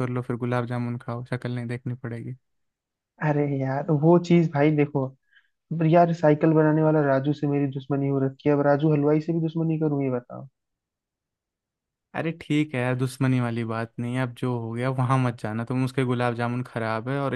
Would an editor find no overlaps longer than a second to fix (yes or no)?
yes